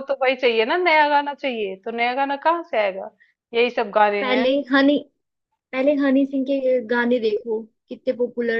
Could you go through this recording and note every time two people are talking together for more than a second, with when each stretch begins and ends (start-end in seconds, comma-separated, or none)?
none